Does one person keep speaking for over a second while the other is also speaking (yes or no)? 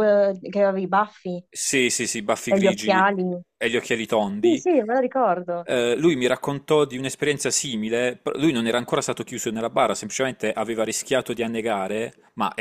no